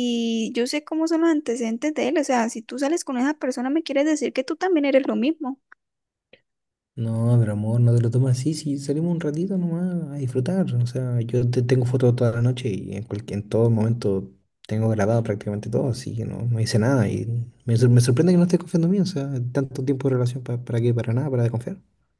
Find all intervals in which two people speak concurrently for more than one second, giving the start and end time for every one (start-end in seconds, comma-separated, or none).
none